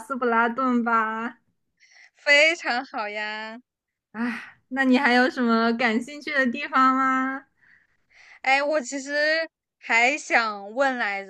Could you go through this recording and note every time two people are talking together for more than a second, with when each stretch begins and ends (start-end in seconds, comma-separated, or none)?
none